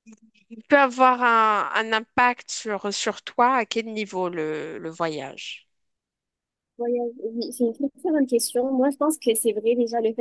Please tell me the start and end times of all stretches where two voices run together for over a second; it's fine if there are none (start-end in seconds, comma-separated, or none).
none